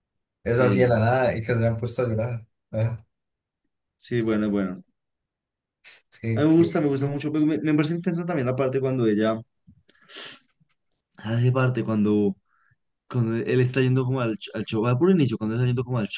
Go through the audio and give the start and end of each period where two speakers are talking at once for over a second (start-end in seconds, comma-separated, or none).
none